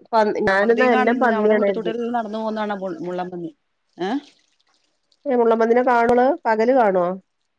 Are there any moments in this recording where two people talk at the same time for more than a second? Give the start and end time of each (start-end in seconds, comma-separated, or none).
0.5-1.9